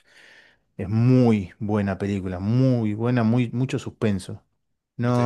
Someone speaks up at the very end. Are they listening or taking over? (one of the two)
listening